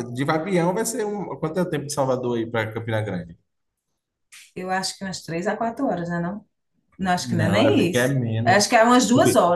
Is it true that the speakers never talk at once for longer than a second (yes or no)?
no